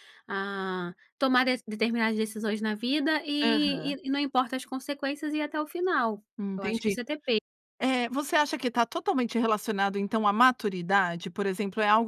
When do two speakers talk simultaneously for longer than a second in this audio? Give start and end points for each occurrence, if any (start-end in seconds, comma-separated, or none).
none